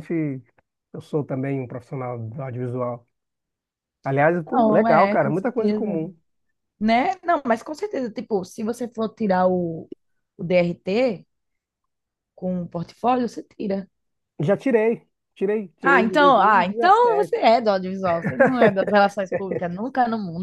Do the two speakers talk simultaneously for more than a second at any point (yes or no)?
yes